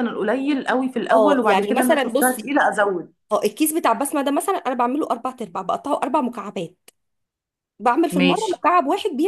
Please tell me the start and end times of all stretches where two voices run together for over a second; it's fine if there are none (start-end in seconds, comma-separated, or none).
1.1-2.5